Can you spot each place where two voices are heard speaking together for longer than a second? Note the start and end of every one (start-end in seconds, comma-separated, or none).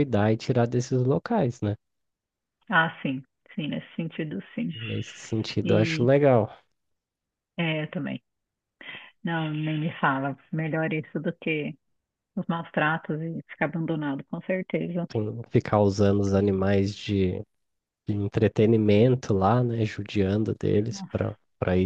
none